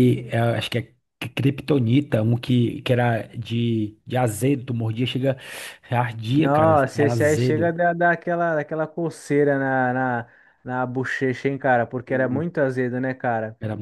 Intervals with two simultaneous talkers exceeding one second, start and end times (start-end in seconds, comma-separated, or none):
6.4-7.8